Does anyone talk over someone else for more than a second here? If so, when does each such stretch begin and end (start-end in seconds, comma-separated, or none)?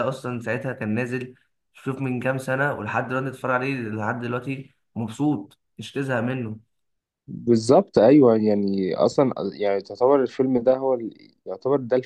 none